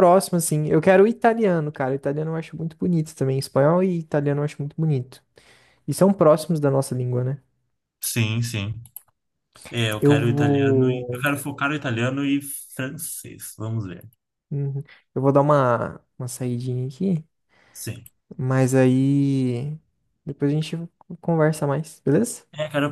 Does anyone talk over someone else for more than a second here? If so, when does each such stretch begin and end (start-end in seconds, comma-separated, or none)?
10.0-11.2